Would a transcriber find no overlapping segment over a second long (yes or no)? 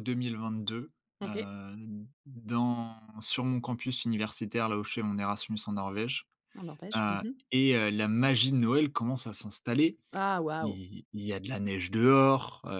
yes